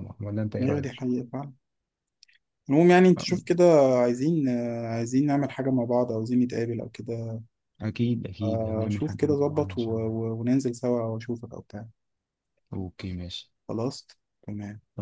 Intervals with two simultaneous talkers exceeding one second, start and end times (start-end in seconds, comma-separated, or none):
8.4-10.1